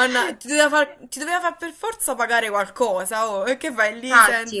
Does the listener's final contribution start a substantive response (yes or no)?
yes